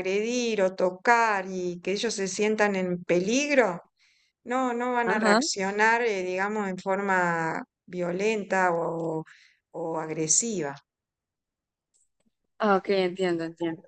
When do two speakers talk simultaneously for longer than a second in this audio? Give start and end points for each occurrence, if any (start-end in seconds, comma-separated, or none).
none